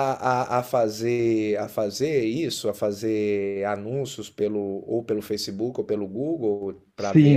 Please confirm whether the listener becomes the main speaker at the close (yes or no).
yes